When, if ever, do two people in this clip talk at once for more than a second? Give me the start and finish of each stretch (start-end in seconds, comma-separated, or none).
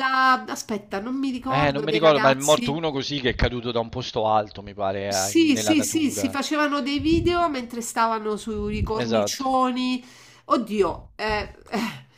1.5-2.8, 5.1-6.4